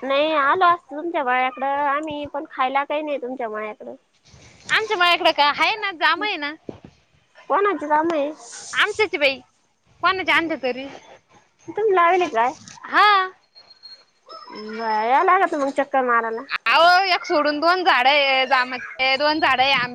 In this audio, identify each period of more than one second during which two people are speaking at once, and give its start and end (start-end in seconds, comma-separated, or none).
none